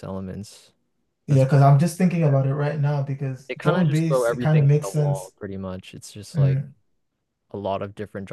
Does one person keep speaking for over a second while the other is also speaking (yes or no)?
yes